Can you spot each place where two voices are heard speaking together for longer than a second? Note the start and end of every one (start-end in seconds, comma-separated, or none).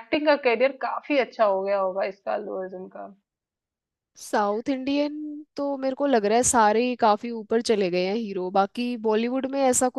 none